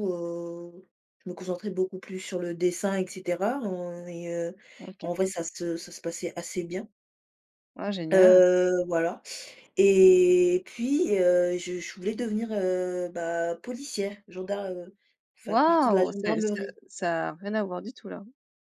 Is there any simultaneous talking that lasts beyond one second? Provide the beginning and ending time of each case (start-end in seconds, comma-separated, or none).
15.4-16.8